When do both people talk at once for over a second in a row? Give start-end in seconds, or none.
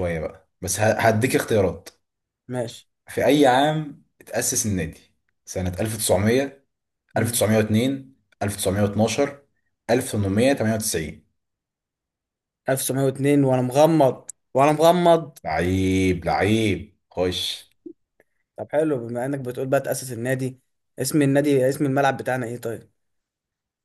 none